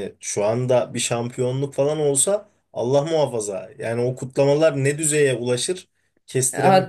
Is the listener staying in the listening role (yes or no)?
no